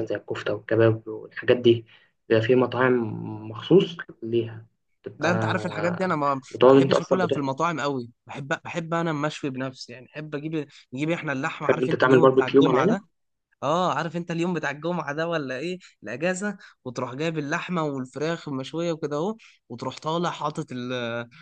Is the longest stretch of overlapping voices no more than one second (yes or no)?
no